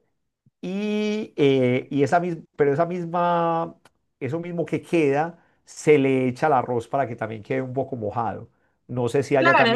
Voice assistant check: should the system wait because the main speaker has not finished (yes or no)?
no